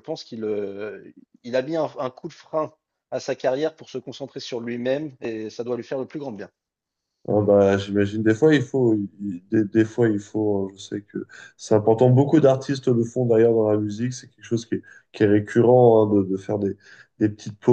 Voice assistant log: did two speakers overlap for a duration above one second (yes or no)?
no